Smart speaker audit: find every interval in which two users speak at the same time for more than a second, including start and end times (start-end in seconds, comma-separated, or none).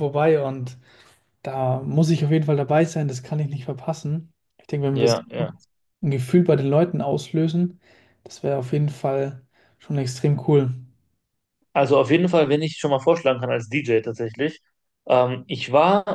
none